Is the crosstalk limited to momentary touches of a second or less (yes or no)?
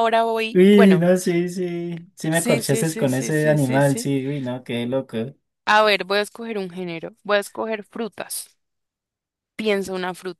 no